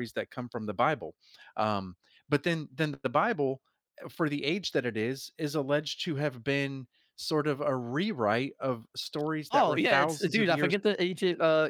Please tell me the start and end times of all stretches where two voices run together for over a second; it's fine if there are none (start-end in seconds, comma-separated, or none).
9.5-10.7